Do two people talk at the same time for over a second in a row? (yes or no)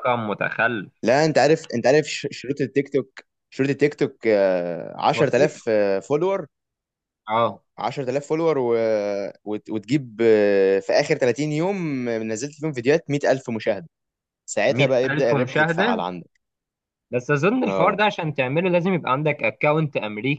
yes